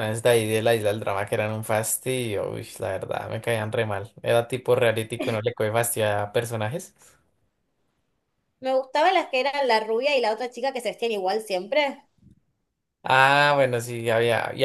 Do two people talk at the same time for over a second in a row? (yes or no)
no